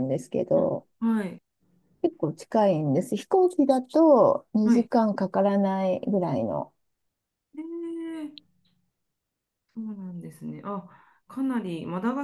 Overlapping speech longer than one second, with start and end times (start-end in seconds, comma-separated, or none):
none